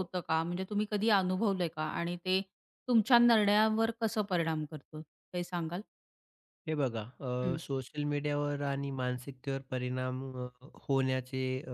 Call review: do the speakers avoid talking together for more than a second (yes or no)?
yes